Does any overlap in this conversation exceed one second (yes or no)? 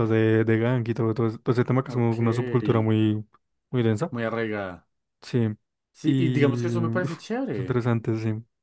yes